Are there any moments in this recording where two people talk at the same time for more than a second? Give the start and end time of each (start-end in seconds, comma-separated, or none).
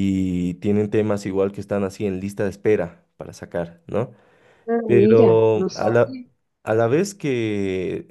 4.8-6.2